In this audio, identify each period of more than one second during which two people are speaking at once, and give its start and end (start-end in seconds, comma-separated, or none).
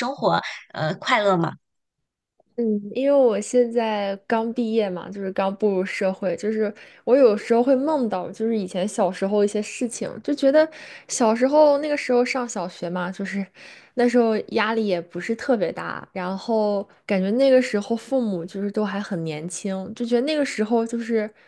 none